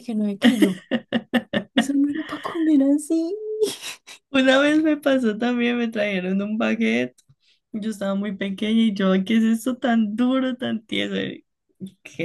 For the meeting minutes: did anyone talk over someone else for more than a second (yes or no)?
no